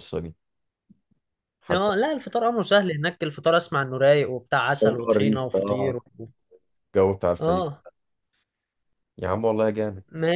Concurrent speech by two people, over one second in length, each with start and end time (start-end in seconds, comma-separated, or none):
4.6-6.0